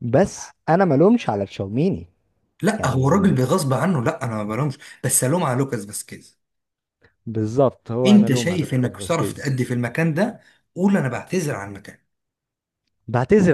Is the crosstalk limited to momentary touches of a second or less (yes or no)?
no